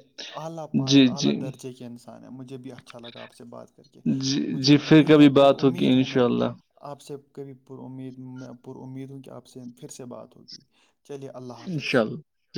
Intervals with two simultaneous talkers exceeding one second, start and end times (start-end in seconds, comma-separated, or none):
4.5-6.2